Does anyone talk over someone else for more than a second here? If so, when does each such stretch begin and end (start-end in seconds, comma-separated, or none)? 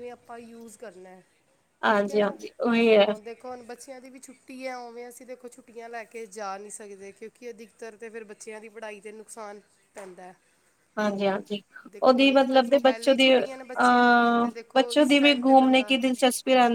12.0-15.9